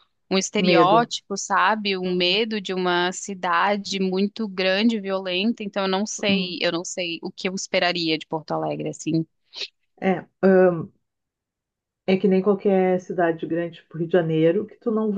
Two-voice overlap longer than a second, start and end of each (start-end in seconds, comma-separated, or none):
none